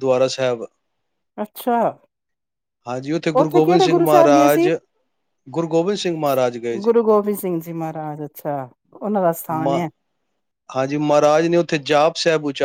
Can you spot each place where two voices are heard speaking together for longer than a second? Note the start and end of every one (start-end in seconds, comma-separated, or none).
3.4-4.7